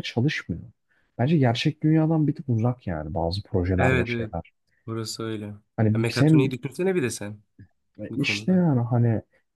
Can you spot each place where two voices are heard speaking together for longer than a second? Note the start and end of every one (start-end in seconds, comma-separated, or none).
none